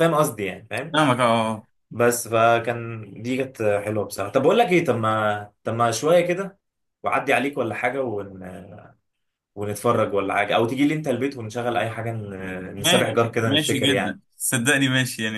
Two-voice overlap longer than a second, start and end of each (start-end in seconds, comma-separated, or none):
12.8-14.2